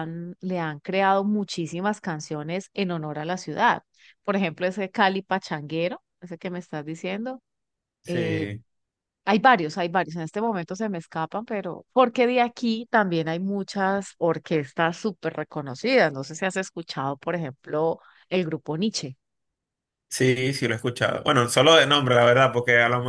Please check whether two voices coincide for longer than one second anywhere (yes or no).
no